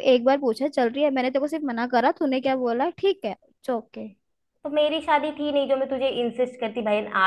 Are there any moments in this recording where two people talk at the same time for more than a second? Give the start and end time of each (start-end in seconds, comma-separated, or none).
none